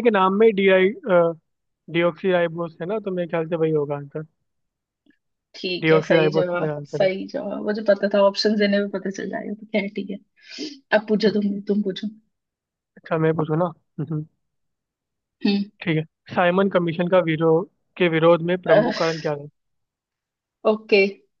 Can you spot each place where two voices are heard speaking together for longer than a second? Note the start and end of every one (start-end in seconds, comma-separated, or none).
5.8-7.1